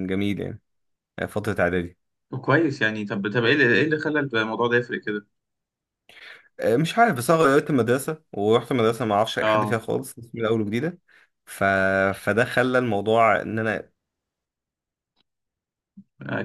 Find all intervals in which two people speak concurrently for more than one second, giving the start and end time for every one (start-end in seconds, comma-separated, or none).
none